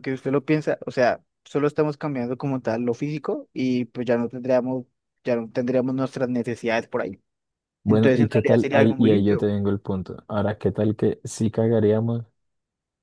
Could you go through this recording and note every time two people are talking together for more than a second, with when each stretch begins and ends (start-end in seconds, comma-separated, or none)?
7.9-9.3